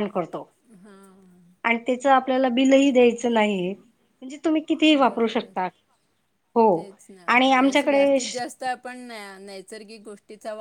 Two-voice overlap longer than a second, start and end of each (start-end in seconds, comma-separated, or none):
none